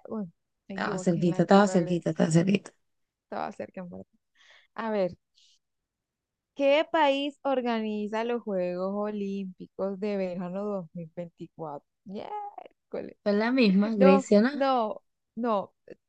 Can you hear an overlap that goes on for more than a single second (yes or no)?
yes